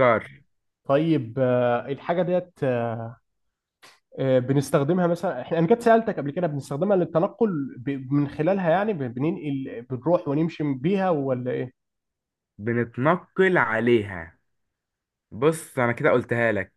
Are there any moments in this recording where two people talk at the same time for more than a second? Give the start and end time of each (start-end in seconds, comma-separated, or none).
none